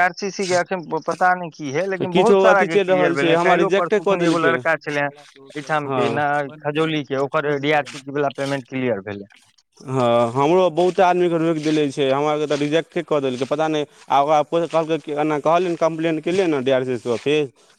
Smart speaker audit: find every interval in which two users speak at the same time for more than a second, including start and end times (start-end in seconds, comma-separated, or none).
2.1-4.6